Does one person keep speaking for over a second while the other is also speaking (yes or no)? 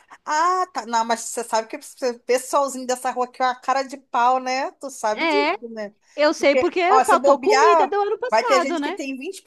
yes